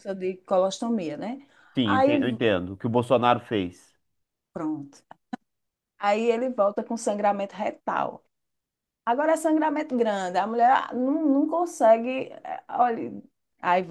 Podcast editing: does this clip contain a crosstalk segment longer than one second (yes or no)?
no